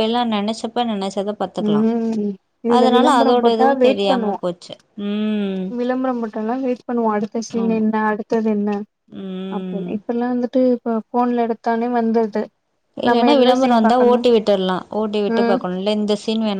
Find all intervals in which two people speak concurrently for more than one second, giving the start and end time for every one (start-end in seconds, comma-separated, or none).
none